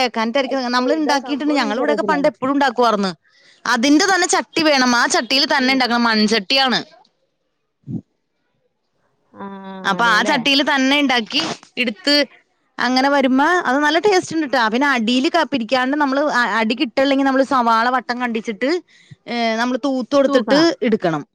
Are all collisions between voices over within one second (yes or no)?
no